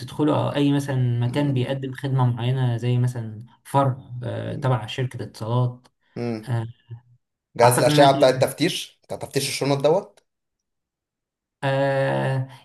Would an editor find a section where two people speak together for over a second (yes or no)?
no